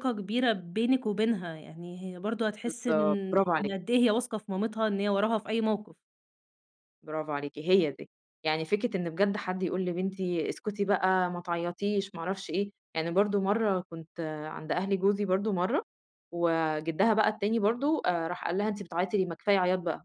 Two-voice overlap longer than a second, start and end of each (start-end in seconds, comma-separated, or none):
none